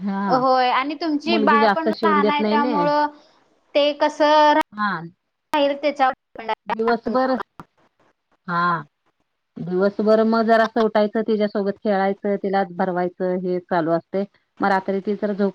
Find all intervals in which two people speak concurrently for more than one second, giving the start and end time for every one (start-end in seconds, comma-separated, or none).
1.3-2.7